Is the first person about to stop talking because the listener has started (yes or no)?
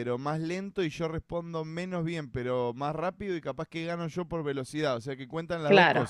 yes